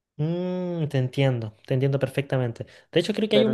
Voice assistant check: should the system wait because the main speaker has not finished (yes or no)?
yes